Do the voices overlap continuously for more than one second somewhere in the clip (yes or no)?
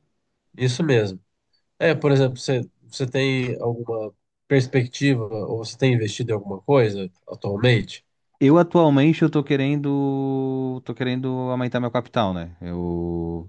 no